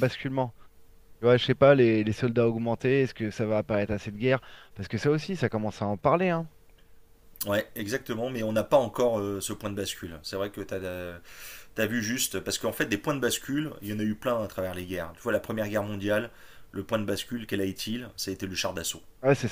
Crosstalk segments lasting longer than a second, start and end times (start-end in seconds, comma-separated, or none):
none